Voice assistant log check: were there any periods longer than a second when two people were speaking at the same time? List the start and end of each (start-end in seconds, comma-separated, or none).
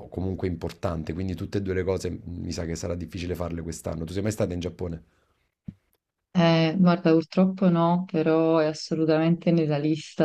none